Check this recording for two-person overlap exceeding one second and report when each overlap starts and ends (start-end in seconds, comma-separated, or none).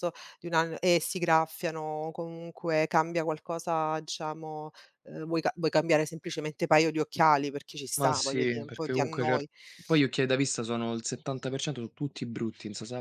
8.0-9.5